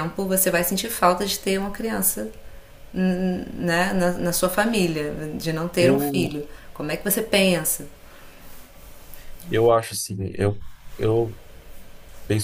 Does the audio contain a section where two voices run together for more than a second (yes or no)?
no